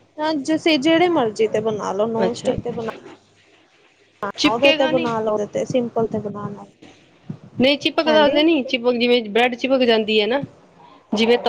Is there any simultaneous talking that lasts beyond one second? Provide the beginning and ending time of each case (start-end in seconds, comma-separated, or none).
none